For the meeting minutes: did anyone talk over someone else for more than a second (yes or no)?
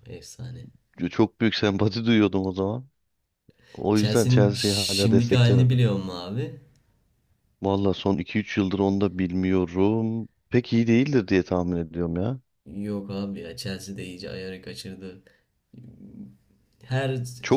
yes